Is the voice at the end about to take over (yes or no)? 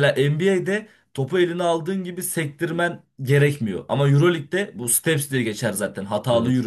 no